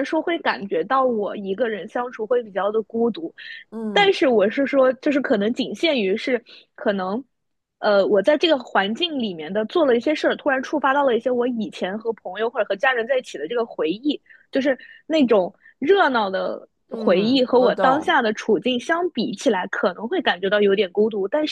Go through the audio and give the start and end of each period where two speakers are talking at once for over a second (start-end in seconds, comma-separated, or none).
16.9-18.2